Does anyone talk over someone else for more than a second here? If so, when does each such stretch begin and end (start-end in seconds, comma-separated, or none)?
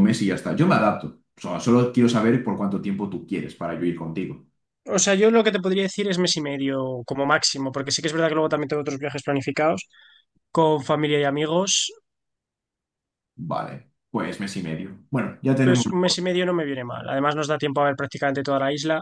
none